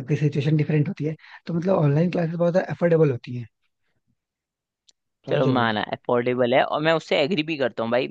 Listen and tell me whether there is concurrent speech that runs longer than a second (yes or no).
no